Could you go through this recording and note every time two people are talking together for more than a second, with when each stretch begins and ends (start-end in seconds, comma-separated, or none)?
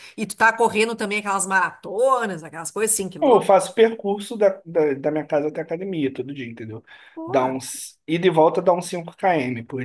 none